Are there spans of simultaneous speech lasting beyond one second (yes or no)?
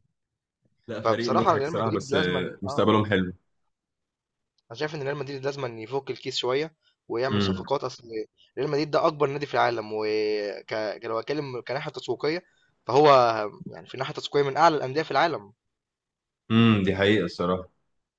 yes